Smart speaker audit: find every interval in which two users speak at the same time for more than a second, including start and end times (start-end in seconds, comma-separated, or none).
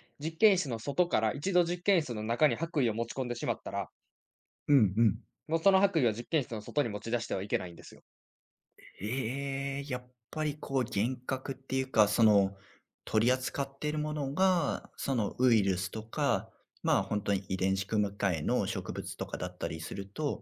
none